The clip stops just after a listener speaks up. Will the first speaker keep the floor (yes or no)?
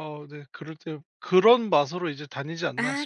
no